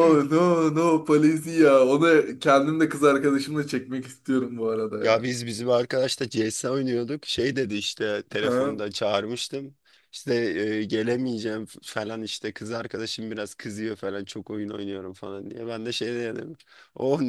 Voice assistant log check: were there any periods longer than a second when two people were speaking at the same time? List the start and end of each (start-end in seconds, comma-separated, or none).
none